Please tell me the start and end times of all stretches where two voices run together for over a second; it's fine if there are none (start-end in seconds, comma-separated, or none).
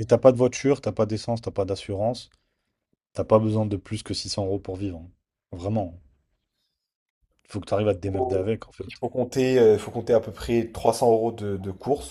none